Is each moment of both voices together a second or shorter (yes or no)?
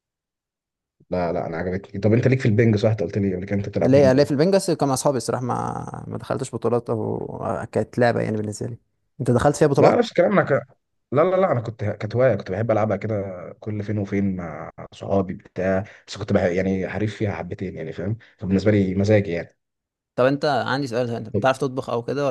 yes